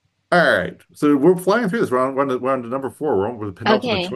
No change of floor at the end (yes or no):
no